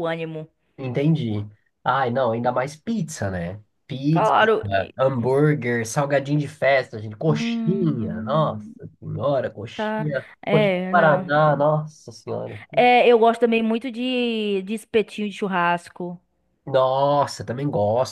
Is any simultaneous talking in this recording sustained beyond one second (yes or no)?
yes